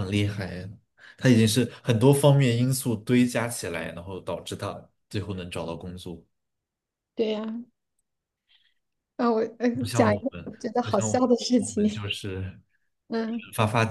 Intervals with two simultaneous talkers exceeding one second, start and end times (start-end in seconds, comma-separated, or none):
9.8-12.1